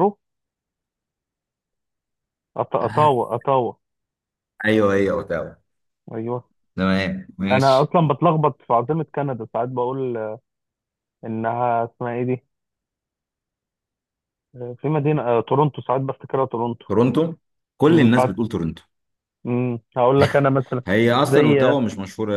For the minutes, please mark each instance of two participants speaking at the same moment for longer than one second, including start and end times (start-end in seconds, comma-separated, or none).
none